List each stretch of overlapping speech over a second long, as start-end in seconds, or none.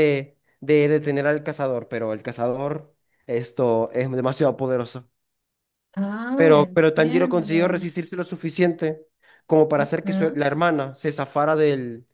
6.3-7.8